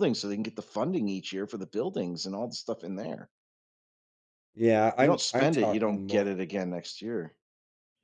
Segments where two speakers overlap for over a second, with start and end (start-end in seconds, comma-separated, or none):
5.0-6.3